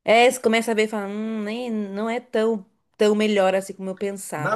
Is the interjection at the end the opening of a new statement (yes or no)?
yes